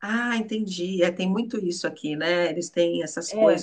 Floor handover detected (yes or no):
yes